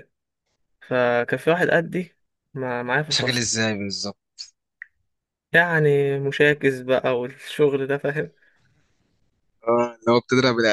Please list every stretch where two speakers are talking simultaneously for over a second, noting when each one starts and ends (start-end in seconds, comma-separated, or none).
none